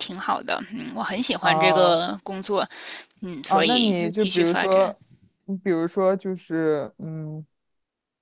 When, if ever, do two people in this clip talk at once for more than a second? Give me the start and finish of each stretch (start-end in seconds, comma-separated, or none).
3.5-5.0